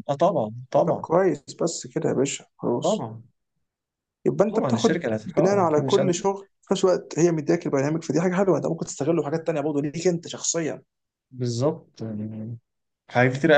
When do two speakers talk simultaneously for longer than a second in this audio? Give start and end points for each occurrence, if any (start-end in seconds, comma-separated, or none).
4.5-6.1